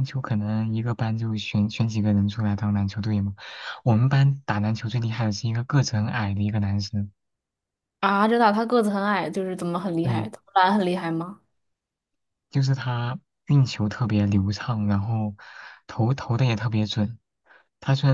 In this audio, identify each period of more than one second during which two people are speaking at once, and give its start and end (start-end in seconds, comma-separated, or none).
none